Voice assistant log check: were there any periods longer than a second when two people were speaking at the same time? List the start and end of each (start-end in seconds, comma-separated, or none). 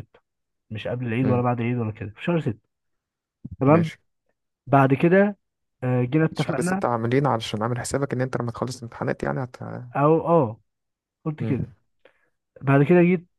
none